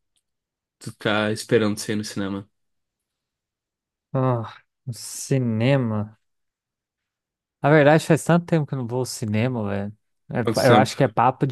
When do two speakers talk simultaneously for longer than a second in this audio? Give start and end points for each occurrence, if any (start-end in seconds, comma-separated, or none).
none